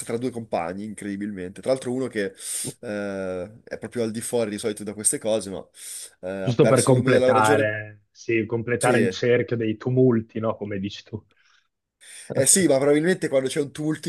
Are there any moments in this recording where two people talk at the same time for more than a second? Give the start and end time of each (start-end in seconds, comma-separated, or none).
6.4-7.7